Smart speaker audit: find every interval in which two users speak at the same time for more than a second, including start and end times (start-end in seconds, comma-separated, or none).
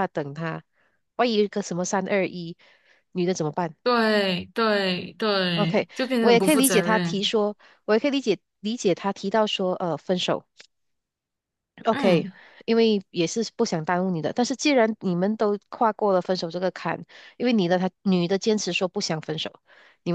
5.6-7.3